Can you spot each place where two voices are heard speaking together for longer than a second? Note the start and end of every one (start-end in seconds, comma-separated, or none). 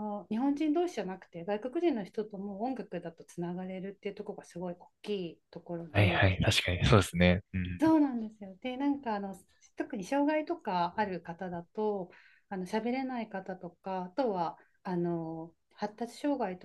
none